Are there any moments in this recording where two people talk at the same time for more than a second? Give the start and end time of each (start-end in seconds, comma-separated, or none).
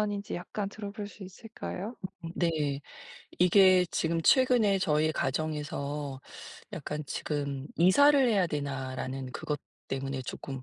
none